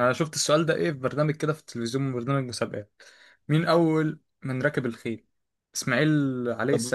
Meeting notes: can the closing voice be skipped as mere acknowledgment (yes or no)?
yes